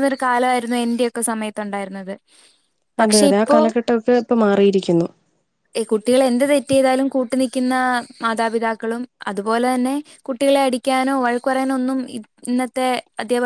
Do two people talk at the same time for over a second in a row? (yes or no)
no